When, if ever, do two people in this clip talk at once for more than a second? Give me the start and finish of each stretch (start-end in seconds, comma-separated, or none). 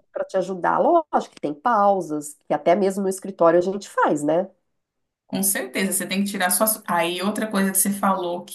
none